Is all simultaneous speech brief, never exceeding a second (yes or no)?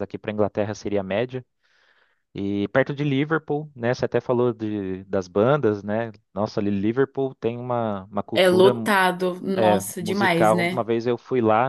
no